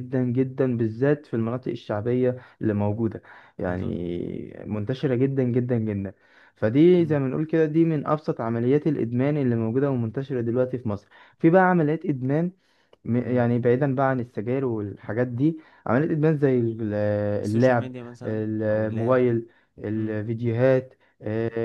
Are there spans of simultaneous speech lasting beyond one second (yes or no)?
yes